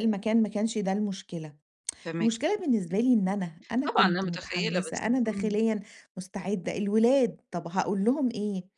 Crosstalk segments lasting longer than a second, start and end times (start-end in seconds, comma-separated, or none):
3.9-5.6